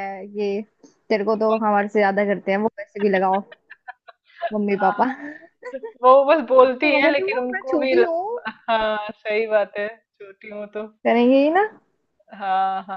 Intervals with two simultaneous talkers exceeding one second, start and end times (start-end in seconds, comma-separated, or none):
6.8-8.4